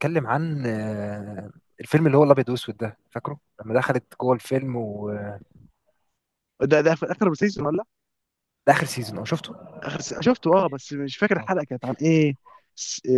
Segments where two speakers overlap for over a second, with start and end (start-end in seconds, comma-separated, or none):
none